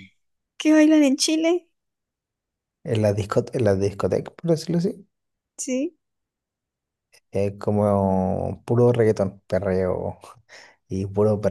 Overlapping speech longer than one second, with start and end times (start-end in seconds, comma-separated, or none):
none